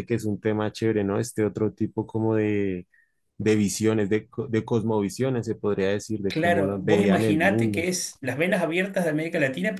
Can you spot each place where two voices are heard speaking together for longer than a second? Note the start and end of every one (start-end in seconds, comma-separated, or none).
6.3-7.9